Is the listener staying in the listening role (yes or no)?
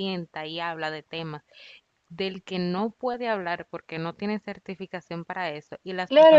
no